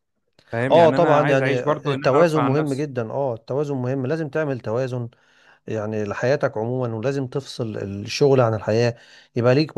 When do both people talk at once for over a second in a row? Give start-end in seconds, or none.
0.7-2.9